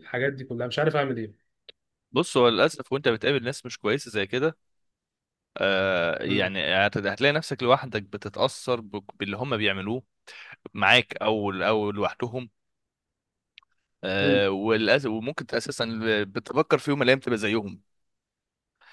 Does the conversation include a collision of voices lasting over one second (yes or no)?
no